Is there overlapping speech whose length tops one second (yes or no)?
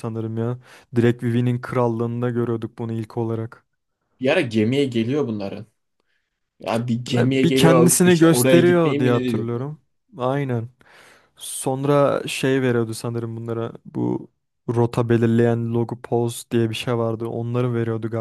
yes